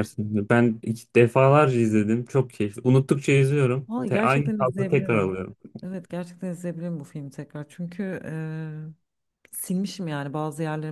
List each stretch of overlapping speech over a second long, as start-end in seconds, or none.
3.9-5.3